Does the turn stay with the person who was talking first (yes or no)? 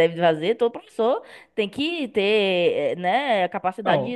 no